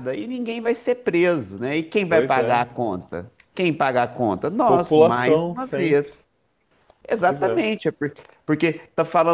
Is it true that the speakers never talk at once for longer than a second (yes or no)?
no